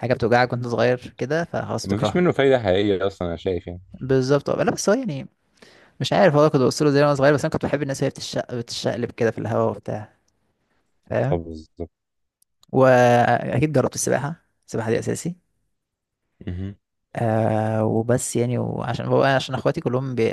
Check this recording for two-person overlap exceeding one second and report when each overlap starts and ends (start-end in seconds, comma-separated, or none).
none